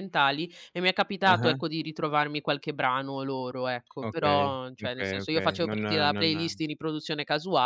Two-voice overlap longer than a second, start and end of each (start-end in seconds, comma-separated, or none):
4.1-6.6